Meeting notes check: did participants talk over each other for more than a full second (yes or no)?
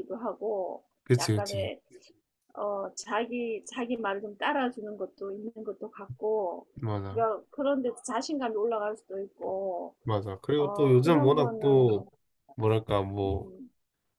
yes